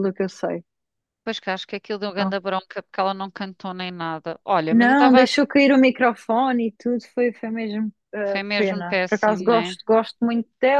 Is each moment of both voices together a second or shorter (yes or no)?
no